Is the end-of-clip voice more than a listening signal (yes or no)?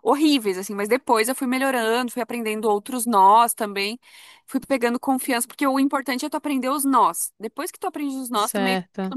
no